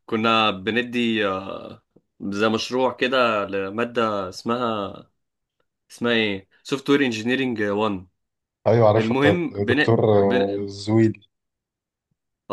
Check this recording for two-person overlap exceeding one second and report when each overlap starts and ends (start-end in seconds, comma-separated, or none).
8.9-10.7